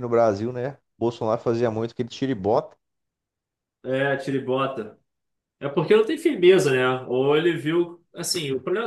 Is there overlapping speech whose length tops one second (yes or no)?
no